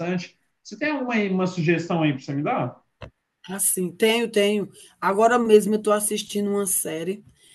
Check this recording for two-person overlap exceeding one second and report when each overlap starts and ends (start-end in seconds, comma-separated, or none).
none